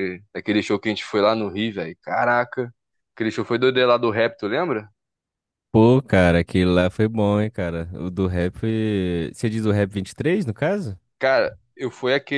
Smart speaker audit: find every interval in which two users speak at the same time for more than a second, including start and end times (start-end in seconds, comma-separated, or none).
none